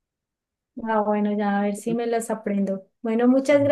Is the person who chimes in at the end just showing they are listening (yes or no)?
yes